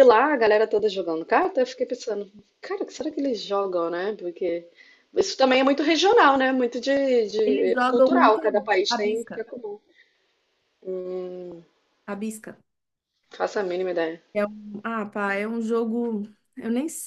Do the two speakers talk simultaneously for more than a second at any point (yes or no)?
yes